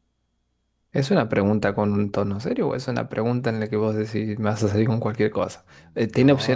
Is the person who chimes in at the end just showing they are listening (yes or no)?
no